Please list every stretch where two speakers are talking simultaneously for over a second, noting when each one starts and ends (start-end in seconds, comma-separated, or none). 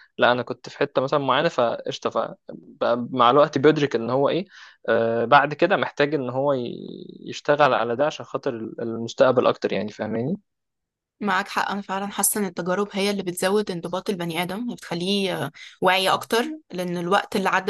none